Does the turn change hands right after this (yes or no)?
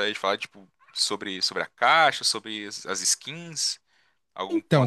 yes